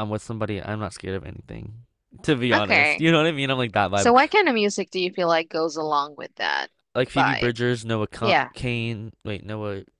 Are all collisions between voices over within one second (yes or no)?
yes